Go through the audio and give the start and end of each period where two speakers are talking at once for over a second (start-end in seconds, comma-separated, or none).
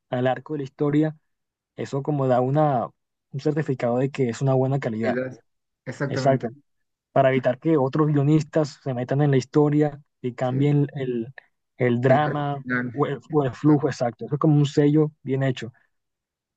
12.1-13.8